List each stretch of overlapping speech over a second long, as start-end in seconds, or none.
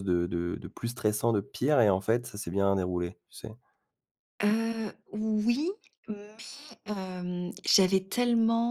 none